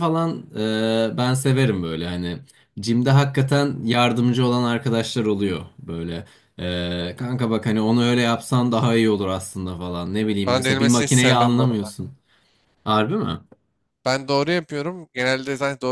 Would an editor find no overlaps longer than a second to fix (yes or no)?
no